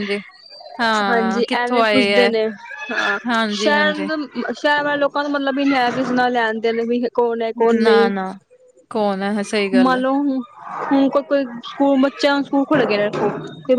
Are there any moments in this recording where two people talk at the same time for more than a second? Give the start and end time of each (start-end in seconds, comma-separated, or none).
1.1-2.3